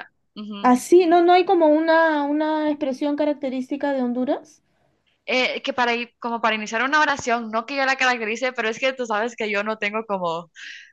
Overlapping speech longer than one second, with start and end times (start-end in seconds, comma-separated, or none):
none